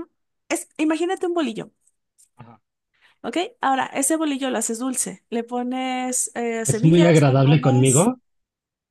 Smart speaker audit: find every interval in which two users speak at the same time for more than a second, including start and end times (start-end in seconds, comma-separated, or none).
6.7-8.1